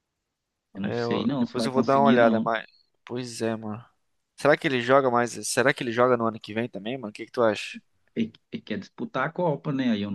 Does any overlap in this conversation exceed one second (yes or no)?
yes